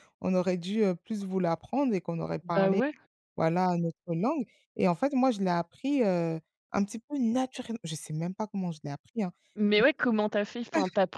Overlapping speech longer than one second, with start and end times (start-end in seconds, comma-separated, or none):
none